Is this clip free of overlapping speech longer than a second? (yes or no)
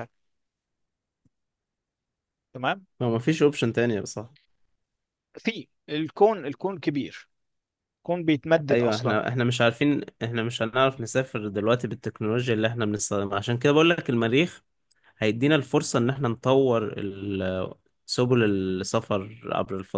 yes